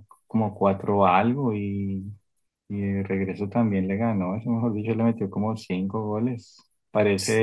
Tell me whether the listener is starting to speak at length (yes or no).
no